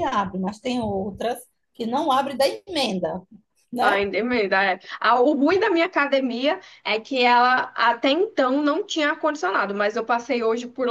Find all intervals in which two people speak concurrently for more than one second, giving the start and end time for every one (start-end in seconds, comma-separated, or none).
none